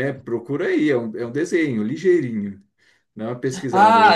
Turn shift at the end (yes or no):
yes